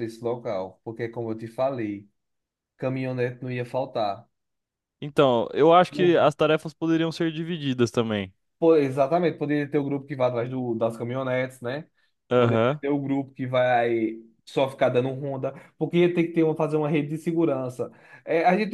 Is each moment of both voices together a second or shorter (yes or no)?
yes